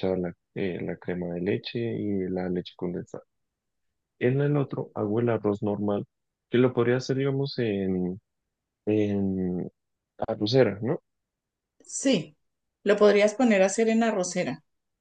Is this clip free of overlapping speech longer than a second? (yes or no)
yes